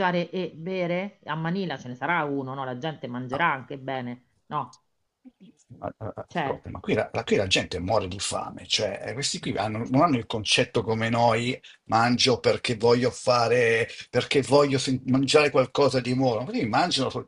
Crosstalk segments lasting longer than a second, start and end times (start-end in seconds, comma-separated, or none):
none